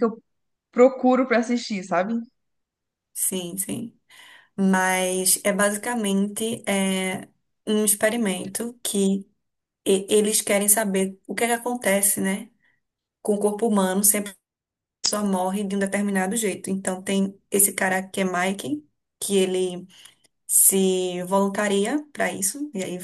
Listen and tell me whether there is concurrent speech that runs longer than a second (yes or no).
no